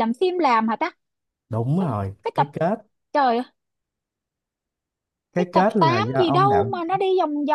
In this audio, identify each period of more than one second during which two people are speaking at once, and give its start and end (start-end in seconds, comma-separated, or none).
5.3-7.0